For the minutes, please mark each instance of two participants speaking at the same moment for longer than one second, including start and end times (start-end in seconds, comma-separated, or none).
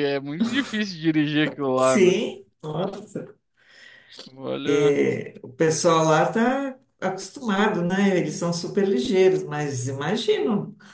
none